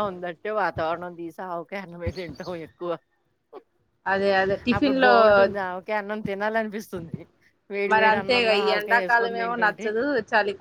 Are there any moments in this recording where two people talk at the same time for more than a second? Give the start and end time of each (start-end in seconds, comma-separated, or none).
7.9-9.9